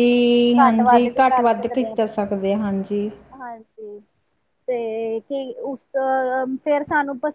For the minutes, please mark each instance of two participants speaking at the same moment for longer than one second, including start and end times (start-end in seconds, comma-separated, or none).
0.6-2.2